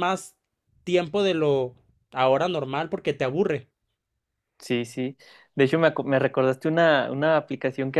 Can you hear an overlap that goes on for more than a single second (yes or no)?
no